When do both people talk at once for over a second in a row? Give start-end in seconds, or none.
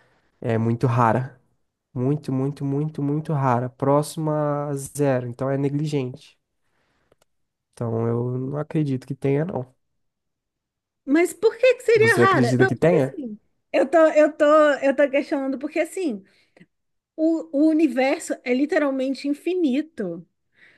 11.9-13.2